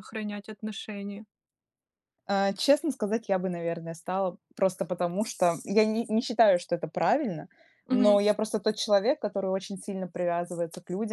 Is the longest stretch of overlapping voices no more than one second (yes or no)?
yes